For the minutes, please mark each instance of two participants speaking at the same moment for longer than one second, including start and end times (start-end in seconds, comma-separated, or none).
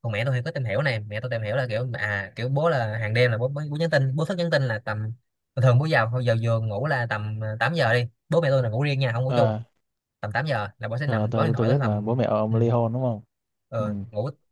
11.0-12.6